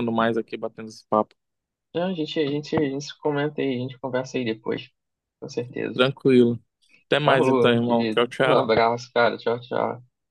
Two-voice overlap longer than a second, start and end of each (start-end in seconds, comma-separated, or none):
7.2-8.8